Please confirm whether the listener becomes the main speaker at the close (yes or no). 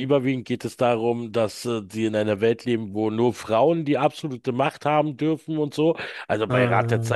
no